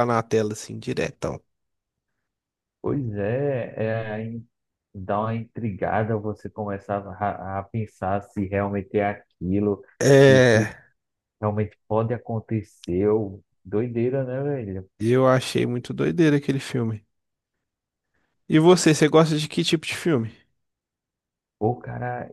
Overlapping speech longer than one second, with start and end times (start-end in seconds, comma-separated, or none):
none